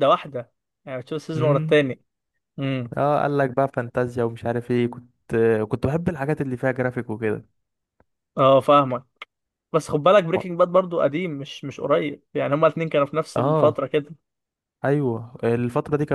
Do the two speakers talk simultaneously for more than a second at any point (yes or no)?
no